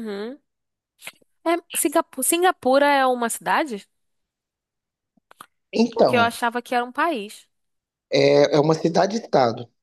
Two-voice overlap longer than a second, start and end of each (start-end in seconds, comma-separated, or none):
none